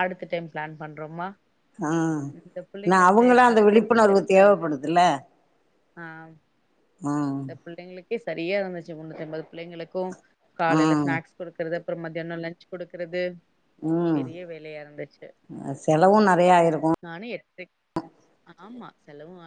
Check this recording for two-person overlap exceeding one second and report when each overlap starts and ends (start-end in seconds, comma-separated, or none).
3.5-4.9